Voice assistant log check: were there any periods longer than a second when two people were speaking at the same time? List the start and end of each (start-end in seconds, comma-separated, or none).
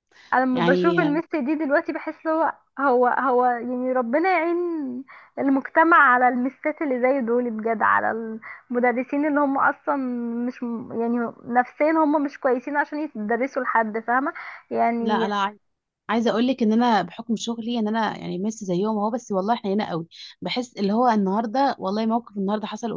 none